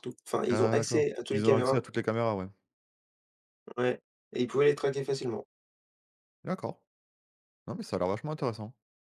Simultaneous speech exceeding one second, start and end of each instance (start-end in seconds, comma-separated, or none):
0.5-1.8